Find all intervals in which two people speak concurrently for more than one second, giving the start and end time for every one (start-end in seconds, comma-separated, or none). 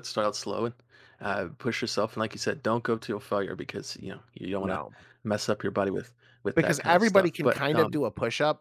6.6-8.0